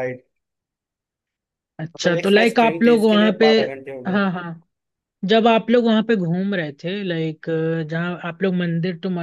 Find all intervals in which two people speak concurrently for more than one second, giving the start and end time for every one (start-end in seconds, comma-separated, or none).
1.9-3.5